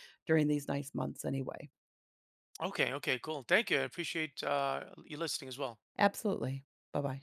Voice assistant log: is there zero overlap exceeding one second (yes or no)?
yes